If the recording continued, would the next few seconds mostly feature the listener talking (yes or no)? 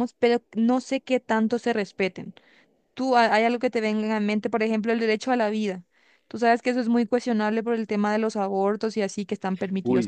yes